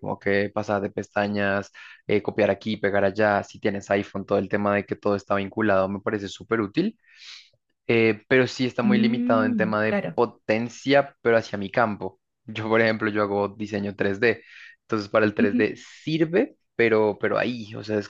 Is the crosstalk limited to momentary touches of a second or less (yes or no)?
no